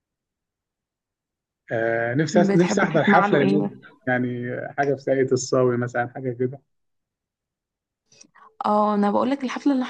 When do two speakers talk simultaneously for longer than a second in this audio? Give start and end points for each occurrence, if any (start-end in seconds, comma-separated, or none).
2.3-3.8